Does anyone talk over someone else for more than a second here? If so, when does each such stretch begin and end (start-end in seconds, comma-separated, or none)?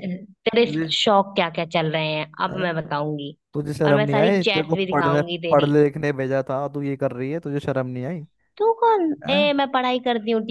3.9-5.7